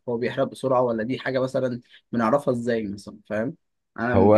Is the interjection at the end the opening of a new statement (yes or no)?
no